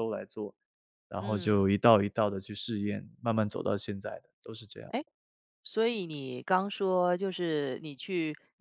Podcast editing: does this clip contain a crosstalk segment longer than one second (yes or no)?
no